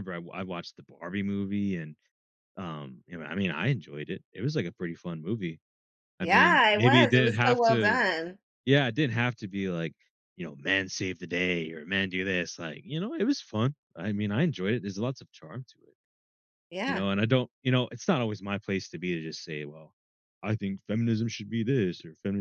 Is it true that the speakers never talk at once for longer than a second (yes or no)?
no